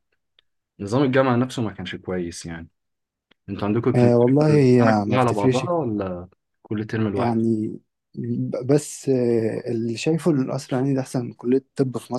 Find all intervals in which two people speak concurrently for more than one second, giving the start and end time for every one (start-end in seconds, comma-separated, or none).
4.0-5.7